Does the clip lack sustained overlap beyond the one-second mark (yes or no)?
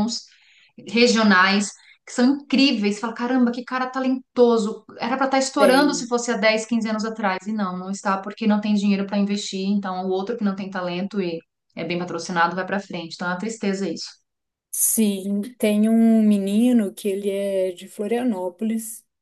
yes